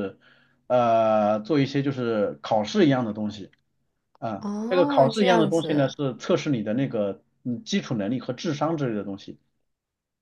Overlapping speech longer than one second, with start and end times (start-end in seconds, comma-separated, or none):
4.4-5.9